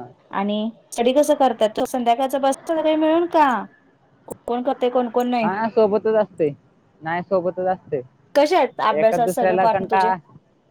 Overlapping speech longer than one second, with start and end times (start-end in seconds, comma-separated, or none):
8.3-10.1